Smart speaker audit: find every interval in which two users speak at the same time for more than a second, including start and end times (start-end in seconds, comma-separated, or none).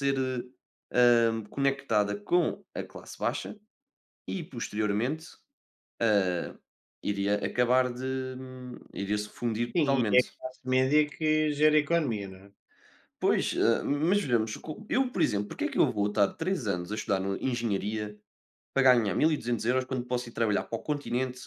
none